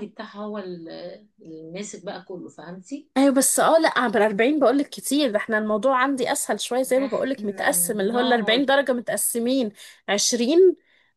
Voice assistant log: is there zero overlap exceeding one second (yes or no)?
no